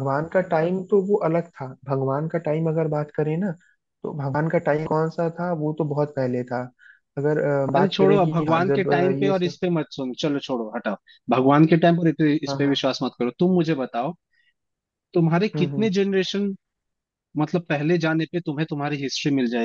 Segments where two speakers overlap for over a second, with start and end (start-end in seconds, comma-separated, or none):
7.8-9.6